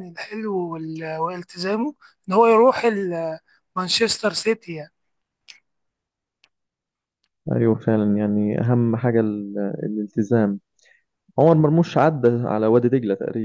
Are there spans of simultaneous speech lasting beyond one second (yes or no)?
no